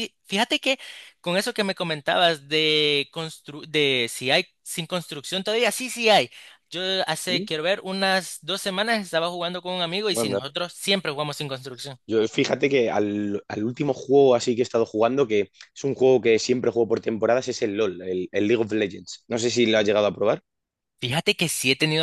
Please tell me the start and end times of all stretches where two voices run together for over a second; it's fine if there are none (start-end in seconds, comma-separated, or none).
none